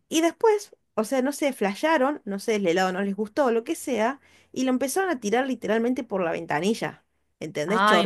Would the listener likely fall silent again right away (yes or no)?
yes